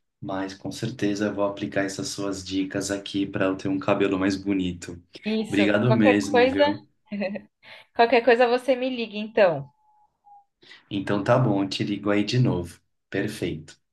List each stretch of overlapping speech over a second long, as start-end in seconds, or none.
5.5-6.8